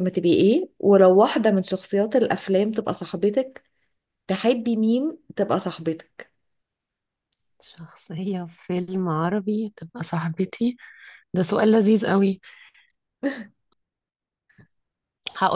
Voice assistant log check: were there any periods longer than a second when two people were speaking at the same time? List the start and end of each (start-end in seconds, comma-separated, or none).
none